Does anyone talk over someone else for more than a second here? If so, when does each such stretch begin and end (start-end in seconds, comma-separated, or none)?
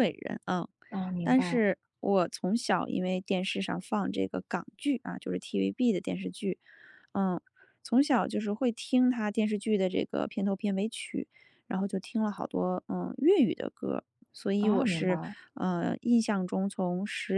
none